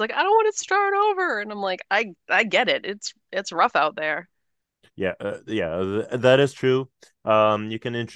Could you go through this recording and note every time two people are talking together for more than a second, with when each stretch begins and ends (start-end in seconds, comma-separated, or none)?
none